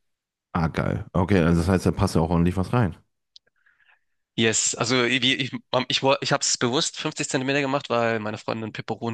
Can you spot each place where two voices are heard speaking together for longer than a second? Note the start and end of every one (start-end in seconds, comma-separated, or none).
none